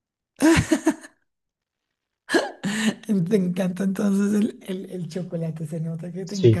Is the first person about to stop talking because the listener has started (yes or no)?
yes